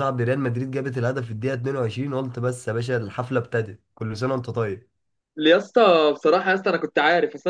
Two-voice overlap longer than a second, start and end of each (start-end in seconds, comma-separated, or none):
none